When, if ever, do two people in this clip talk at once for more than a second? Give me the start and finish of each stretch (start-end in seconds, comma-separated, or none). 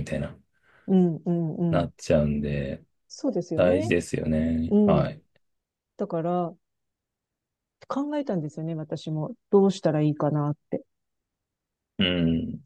none